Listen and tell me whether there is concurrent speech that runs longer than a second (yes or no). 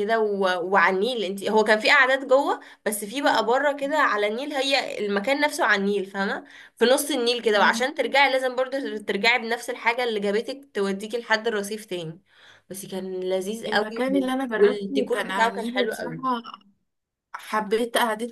yes